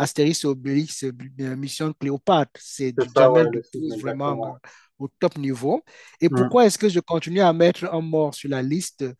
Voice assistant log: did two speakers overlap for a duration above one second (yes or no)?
yes